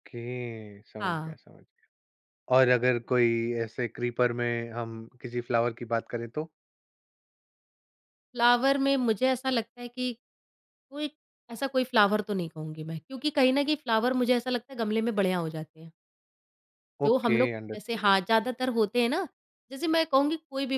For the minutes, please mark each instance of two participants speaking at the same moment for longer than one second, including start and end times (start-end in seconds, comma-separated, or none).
17.1-18.5